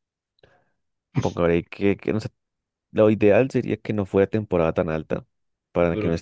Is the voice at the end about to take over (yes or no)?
no